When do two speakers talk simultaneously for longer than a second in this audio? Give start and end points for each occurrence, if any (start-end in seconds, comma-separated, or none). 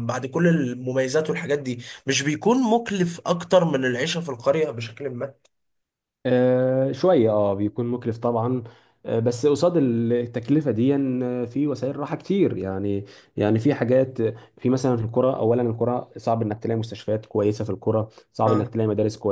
none